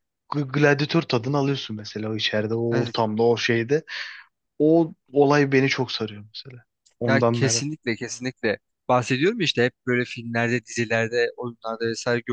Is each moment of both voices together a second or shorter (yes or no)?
yes